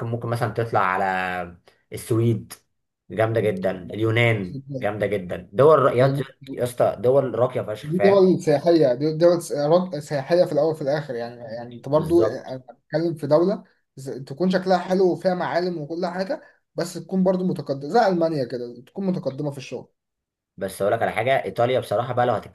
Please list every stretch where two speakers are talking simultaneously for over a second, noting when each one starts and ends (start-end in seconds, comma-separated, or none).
none